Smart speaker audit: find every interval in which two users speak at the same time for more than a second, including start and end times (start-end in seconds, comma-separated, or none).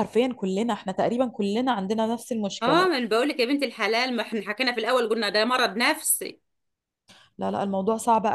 none